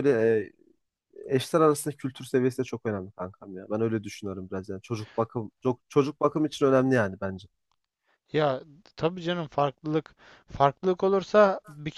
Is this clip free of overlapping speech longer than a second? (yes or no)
yes